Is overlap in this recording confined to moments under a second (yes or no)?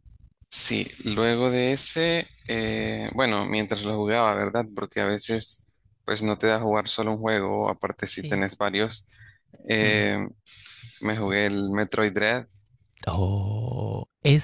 yes